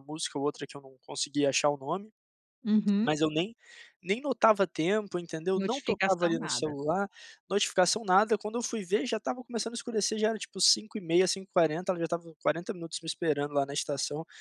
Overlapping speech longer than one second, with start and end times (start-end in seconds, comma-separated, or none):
5.5-6.8